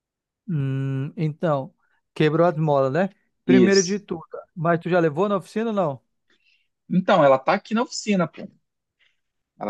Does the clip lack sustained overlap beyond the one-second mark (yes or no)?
yes